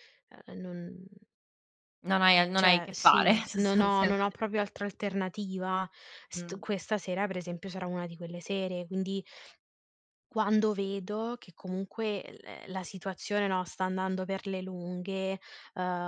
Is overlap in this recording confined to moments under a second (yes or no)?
no